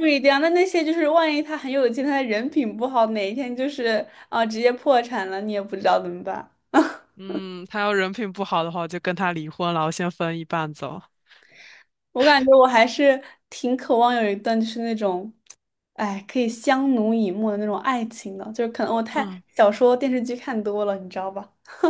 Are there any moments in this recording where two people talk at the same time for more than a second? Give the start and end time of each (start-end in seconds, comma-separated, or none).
none